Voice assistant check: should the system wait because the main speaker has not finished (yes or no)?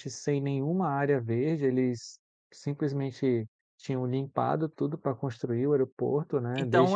no